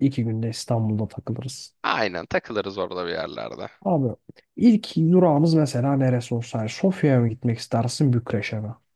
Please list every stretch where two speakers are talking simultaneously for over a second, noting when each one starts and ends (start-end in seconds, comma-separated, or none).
none